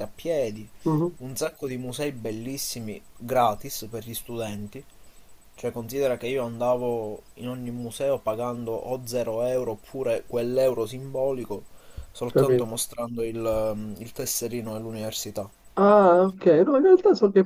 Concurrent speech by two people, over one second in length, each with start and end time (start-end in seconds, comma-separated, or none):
none